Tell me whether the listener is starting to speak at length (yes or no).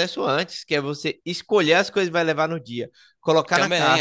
no